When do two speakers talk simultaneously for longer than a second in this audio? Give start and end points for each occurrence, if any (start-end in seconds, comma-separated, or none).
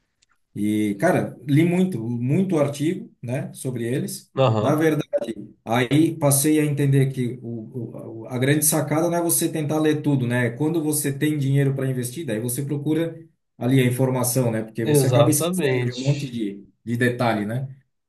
14.8-16.3